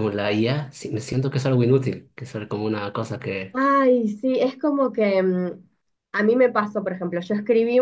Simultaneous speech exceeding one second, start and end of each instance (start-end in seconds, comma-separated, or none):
none